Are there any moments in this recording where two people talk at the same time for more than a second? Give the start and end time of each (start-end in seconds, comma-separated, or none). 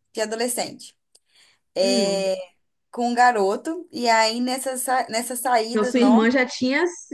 none